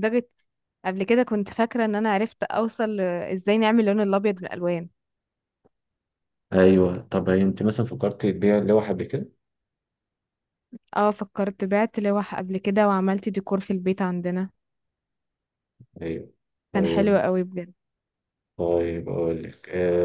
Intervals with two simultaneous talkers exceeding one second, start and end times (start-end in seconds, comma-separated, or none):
none